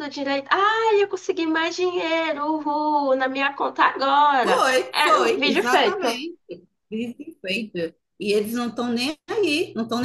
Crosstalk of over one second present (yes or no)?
yes